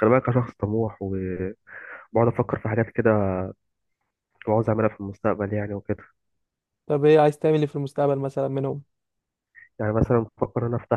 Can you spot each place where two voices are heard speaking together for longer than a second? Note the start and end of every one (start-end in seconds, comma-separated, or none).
none